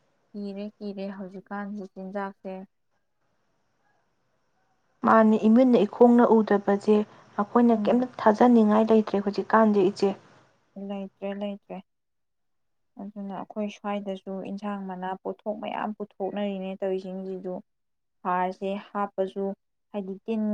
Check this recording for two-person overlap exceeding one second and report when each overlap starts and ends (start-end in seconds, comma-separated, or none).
none